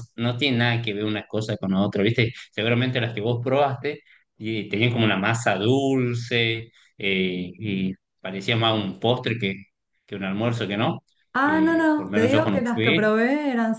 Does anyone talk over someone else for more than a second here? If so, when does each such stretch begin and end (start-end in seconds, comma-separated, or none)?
11.4-13.1